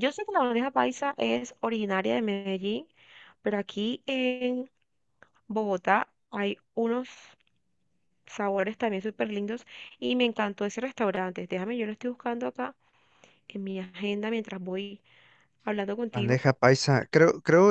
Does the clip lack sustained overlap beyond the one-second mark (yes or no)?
yes